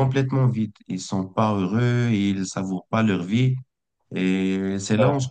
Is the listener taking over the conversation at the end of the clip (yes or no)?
no